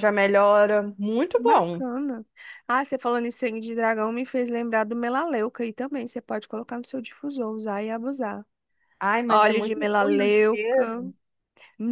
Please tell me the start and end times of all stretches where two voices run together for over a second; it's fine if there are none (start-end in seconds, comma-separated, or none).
9.3-11.0